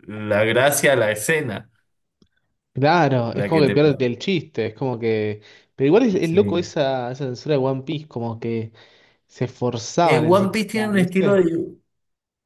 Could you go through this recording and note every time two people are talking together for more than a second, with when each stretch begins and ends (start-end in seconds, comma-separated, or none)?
10.0-11.4